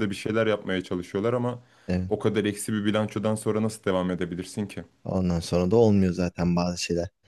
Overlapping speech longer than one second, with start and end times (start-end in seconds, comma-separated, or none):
none